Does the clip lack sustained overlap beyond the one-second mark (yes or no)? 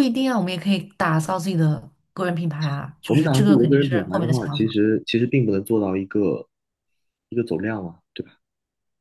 no